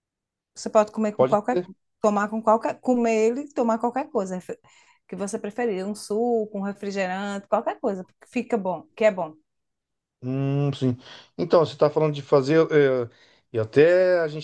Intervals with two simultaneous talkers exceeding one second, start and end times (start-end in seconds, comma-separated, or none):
none